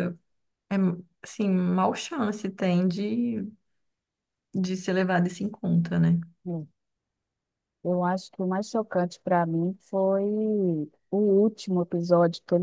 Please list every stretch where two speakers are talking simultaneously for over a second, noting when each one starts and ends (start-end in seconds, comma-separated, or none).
none